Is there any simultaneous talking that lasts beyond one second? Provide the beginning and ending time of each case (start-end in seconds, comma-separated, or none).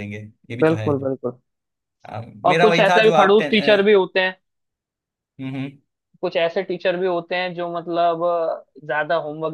2.5-3.9